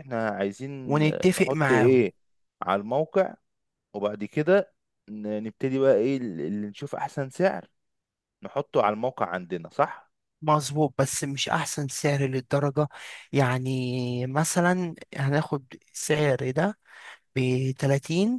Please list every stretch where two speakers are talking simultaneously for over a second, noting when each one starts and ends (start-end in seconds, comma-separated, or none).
0.8-2.1